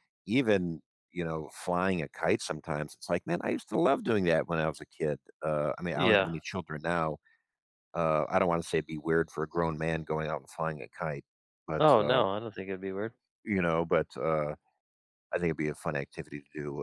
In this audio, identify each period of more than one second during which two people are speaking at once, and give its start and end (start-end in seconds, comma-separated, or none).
none